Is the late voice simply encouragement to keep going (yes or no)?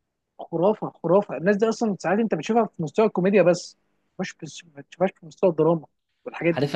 no